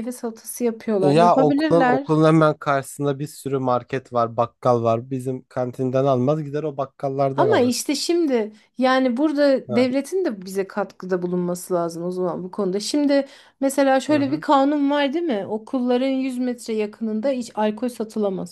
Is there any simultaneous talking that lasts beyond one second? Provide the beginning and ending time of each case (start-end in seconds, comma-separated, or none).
1.0-2.2